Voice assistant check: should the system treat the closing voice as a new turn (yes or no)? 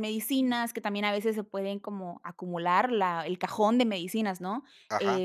yes